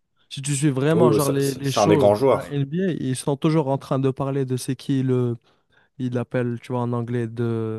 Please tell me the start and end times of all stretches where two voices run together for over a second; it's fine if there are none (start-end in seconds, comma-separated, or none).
0.9-2.6